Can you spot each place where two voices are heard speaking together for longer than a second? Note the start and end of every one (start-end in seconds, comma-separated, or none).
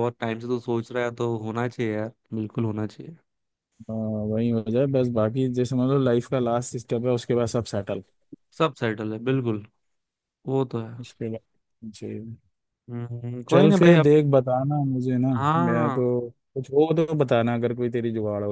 none